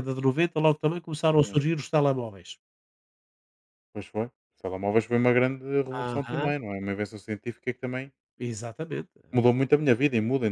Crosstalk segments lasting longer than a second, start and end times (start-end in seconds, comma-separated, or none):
none